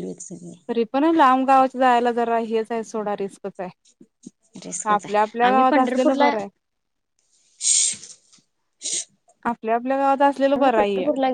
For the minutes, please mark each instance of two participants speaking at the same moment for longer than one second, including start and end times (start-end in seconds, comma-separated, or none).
4.8-6.3